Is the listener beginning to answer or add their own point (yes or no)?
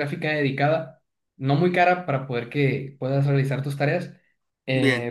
no